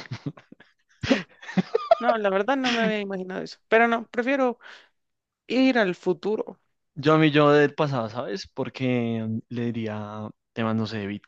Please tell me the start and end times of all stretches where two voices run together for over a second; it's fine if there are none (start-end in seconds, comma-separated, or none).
none